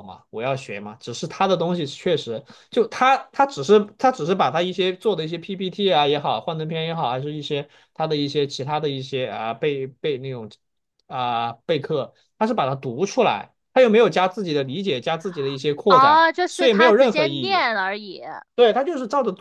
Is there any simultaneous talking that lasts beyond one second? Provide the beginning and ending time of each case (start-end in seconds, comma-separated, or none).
15.9-17.6